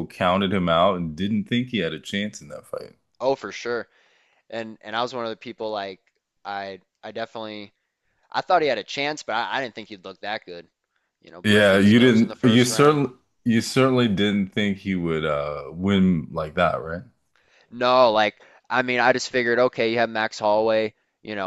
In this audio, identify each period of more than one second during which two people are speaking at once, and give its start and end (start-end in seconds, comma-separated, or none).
11.4-13.0